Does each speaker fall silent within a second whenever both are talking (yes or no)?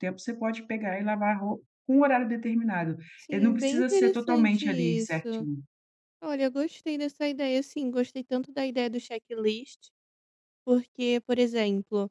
no